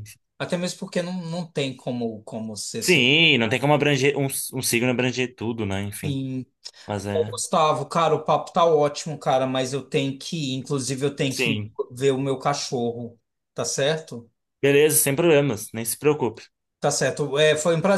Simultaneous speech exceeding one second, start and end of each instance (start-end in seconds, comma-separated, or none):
none